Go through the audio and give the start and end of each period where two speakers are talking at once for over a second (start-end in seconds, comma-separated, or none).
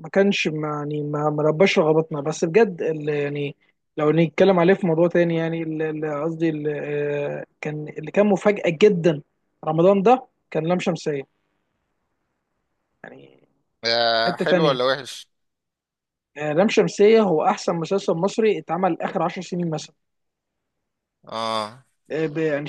none